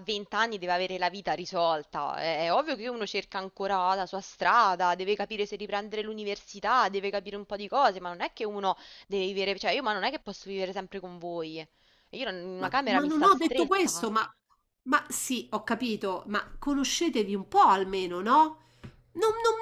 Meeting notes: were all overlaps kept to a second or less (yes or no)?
no